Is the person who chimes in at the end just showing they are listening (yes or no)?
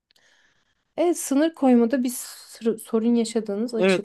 no